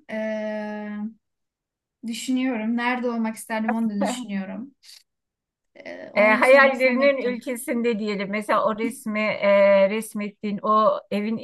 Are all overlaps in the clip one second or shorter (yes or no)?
no